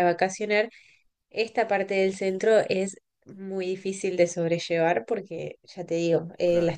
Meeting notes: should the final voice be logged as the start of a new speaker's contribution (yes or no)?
no